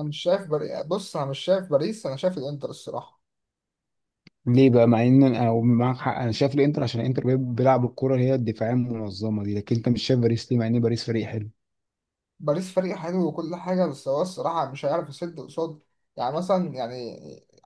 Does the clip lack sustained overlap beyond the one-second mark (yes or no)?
yes